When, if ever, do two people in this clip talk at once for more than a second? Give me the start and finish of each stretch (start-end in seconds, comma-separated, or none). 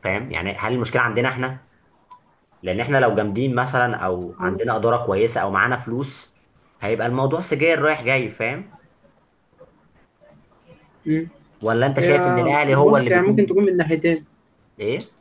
12.0-13.6